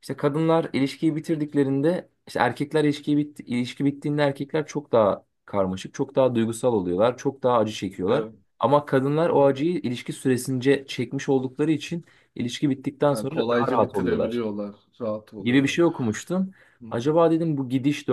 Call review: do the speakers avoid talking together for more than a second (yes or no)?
no